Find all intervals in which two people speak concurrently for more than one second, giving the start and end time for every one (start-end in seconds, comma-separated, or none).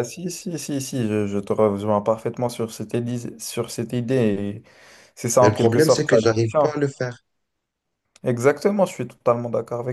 5.4-6.8